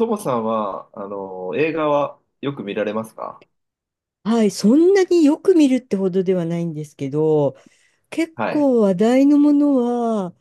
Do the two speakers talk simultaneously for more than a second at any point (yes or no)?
no